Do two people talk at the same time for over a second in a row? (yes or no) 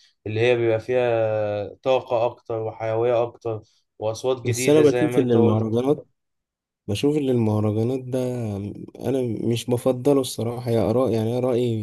yes